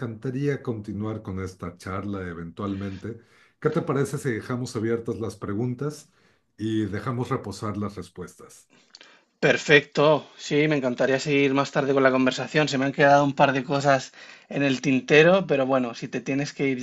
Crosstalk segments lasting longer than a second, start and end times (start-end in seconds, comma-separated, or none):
none